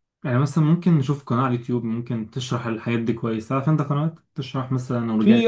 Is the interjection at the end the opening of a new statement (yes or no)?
yes